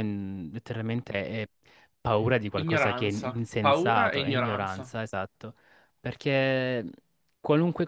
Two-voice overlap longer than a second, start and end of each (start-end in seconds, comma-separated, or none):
2.5-4.9